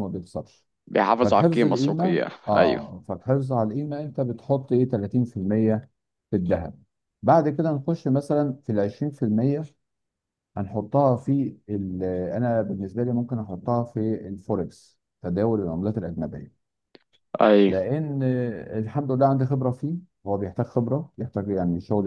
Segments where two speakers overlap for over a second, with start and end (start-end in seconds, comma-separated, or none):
1.2-2.9